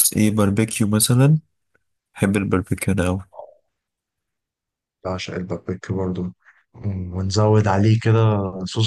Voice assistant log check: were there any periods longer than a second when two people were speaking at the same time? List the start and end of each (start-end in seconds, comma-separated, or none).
none